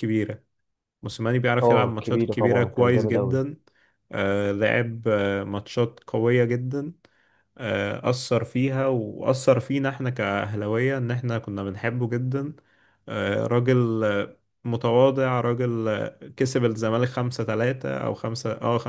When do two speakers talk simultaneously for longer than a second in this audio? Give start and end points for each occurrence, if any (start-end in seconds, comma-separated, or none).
1.6-3.4